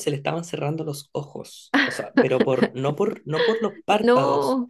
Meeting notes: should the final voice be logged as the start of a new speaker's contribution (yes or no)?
no